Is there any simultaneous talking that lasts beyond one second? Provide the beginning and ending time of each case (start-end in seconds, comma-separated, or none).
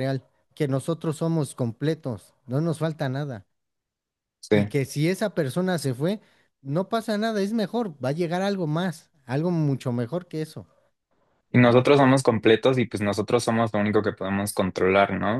none